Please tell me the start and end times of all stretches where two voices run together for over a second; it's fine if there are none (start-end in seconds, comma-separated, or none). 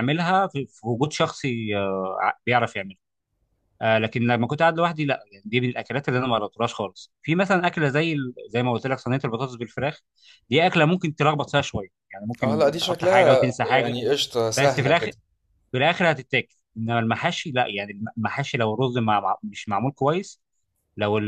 12.4-13.9